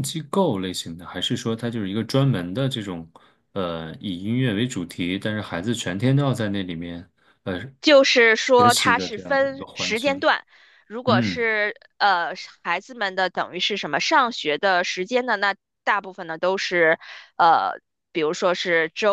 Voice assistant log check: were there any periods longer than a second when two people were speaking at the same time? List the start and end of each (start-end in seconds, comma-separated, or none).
8.6-10.3